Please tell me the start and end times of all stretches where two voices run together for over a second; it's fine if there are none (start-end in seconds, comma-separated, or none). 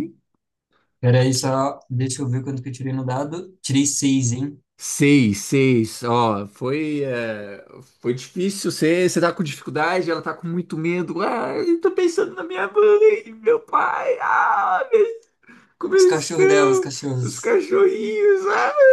15.8-17.6